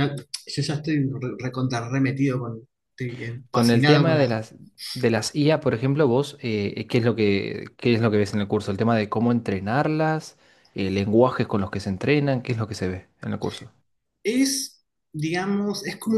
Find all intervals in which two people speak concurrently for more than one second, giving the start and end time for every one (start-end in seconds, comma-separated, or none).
none